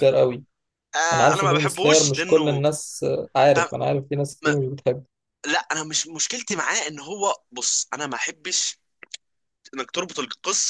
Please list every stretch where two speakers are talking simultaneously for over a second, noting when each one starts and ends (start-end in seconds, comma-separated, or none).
1.1-2.6